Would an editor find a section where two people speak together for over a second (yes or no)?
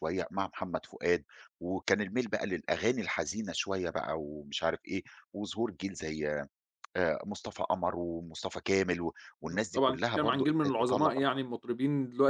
yes